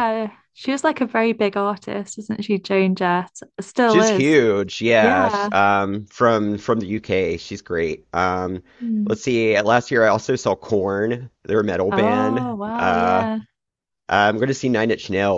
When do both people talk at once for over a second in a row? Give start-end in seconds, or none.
11.9-13.3